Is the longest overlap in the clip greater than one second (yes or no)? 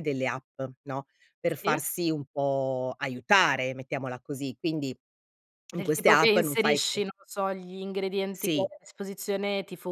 yes